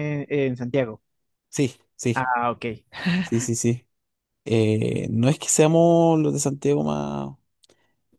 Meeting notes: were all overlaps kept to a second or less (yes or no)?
yes